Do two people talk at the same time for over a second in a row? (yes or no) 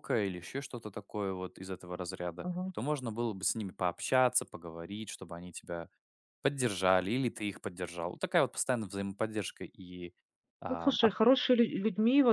no